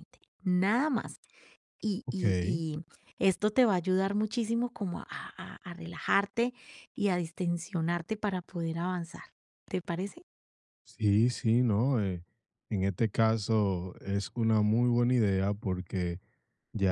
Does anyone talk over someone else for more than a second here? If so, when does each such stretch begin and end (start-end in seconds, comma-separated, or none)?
none